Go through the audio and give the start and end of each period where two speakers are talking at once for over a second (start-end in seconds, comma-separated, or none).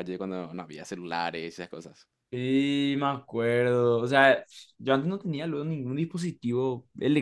none